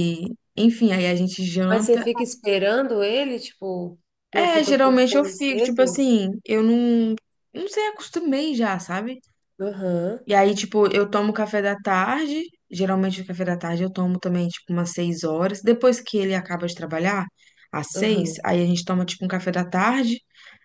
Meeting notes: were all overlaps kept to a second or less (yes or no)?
no